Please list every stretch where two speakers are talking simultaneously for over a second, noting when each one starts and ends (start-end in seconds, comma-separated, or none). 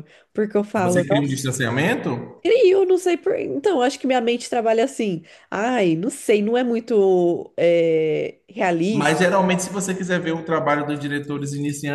none